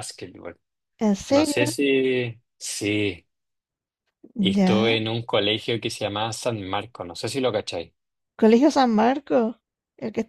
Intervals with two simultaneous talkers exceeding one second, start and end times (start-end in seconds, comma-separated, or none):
none